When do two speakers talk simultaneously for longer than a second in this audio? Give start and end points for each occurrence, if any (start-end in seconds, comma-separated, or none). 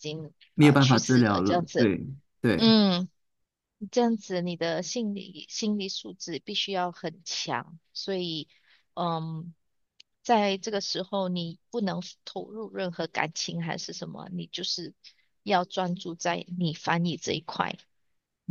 0.5-1.9